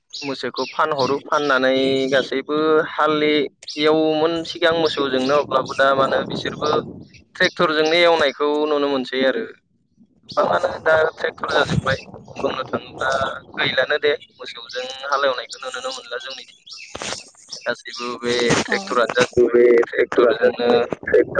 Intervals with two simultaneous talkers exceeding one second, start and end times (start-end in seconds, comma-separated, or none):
18.7-20.7